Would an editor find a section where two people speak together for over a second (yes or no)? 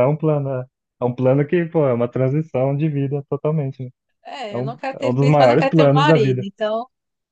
yes